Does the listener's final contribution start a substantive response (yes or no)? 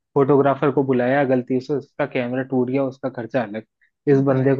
no